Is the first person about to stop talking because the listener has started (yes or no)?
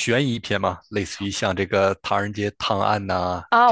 yes